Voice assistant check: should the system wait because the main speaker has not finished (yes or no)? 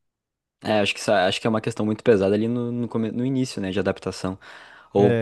yes